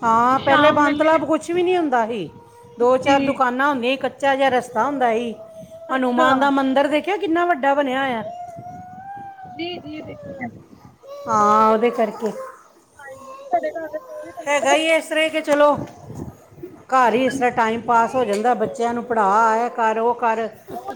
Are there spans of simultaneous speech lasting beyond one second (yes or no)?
no